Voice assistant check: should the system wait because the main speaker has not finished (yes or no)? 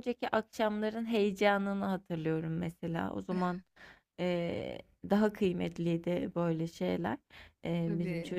yes